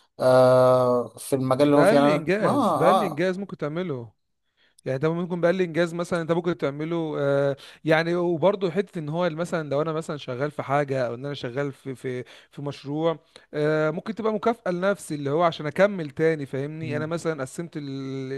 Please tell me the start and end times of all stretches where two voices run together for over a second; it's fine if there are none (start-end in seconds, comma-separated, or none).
1.6-3.2